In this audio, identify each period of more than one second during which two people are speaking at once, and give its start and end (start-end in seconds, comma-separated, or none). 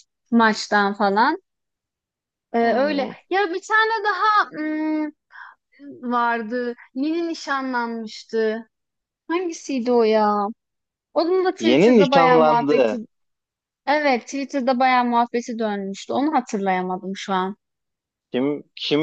11.6-13.0